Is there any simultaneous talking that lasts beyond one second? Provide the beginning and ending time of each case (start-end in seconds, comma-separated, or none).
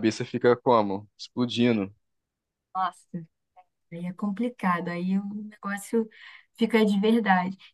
none